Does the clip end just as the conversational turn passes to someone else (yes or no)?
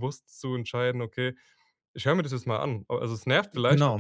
no